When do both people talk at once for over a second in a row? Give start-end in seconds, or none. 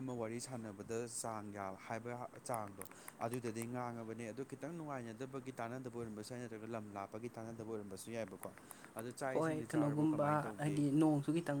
9.3-10.9